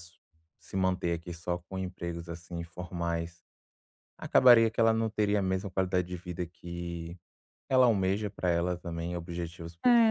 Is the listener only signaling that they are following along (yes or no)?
no